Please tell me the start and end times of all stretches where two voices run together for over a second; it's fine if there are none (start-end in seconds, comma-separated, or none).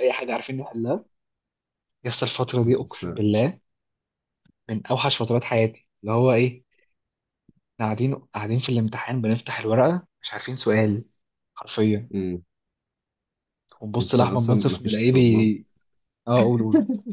14.0-15.5